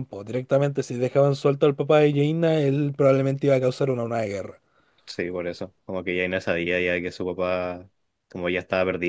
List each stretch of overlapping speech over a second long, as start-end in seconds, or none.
none